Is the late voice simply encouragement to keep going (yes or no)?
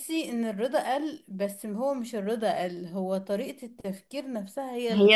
no